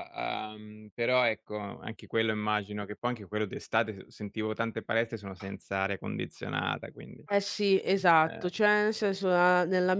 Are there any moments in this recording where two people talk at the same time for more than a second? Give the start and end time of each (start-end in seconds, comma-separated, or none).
none